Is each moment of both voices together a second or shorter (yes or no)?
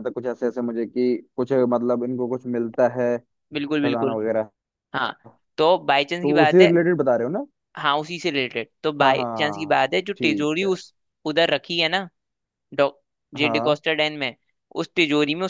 no